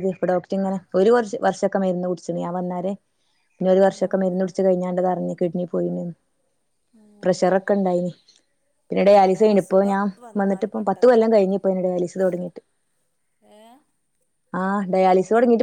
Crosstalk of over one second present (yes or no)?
yes